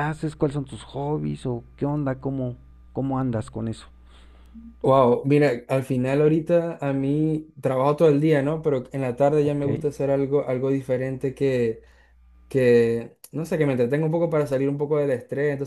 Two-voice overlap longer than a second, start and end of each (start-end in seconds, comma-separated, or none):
none